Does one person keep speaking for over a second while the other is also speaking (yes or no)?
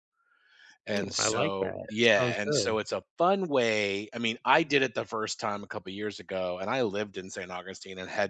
yes